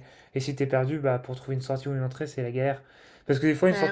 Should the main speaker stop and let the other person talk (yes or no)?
no